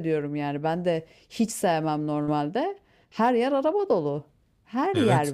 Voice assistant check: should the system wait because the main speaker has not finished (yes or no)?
no